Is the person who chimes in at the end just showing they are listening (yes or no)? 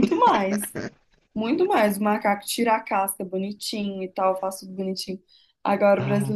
yes